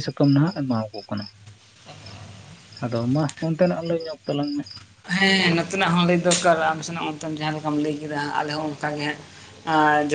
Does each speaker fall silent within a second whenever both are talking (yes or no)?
yes